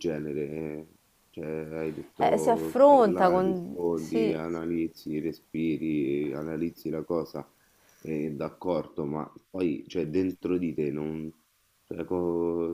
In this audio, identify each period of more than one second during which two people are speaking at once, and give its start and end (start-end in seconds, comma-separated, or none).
2.2-4.4